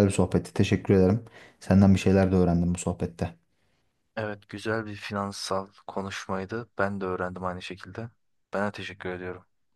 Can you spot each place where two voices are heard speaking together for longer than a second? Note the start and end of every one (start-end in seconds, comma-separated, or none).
none